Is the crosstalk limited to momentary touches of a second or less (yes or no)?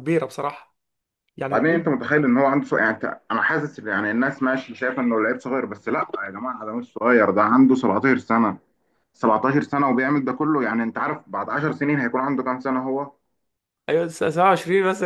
yes